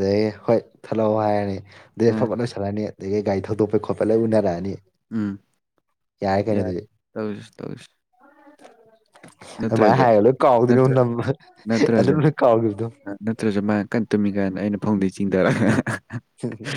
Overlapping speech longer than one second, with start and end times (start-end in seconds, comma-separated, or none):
none